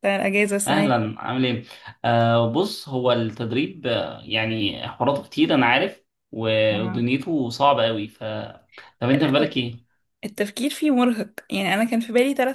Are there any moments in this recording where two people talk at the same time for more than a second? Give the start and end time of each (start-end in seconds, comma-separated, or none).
none